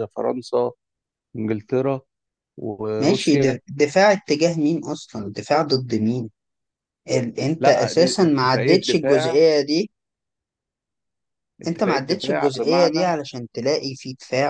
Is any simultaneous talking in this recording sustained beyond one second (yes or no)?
yes